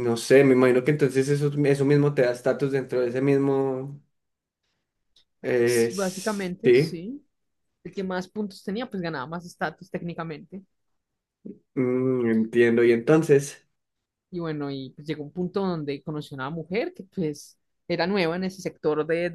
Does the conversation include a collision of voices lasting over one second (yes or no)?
yes